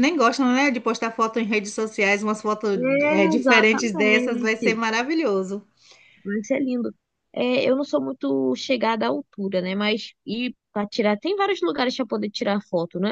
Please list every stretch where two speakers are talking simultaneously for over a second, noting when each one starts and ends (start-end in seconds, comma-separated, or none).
2.7-4.7